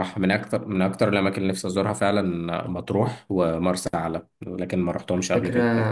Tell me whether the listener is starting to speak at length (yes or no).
yes